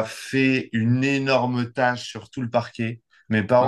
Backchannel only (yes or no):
yes